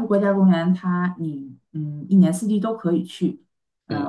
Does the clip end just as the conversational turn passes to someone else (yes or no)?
no